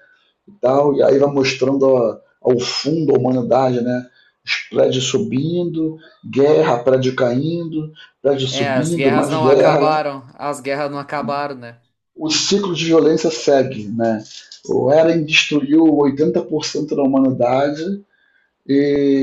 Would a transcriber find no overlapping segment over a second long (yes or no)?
no